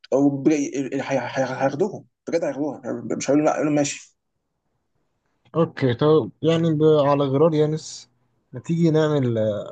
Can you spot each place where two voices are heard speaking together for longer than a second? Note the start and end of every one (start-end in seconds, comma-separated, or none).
none